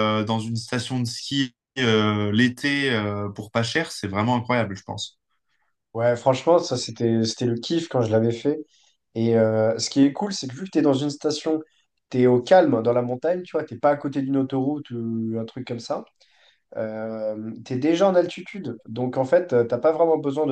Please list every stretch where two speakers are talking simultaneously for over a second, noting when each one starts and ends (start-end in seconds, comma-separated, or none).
none